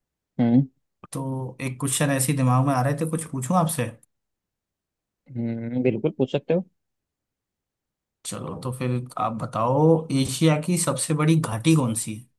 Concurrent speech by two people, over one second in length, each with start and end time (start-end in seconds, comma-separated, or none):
none